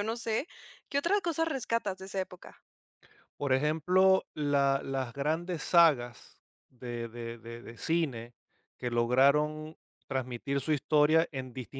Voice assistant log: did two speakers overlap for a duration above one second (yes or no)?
no